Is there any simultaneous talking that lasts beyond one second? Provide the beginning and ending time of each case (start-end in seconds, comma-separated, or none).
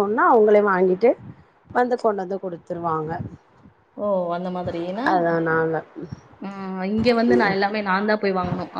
none